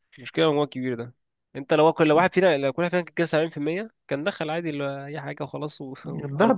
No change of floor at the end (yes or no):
no